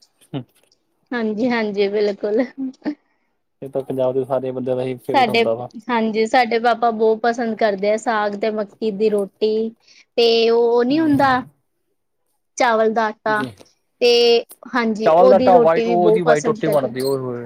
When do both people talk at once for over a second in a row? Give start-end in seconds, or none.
15.1-16.9